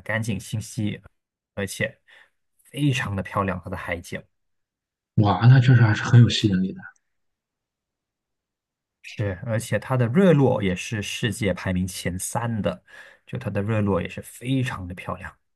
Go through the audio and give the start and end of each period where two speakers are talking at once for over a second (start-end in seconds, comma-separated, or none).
none